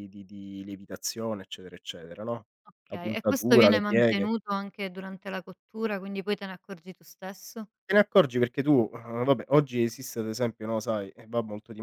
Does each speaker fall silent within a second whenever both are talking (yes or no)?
no